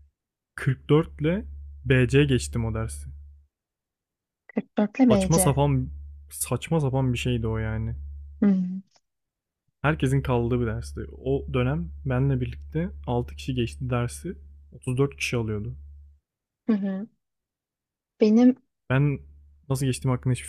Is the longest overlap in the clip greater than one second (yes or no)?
no